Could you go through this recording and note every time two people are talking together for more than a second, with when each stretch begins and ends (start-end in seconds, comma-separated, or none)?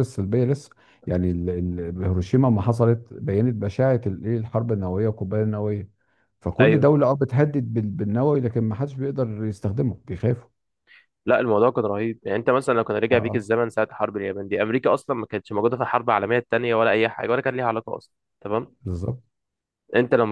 none